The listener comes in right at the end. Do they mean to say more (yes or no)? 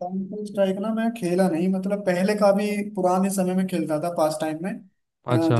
no